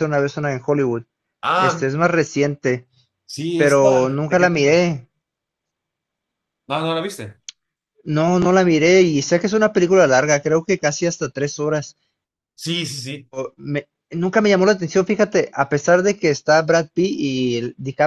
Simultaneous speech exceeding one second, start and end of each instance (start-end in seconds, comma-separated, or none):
3.6-4.8